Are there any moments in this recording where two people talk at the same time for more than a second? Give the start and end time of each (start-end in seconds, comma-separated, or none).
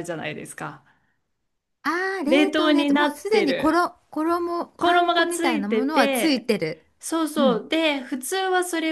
2.3-3.8, 4.8-6.5